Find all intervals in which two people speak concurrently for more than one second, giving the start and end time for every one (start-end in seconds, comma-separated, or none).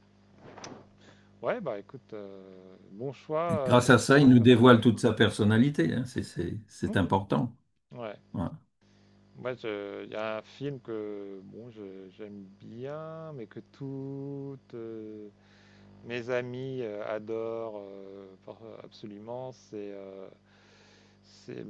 3.5-4.8